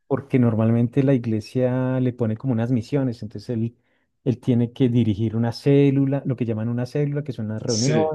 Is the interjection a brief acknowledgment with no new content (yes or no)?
yes